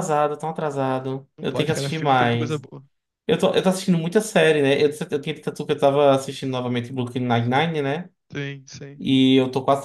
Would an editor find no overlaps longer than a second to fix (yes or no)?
no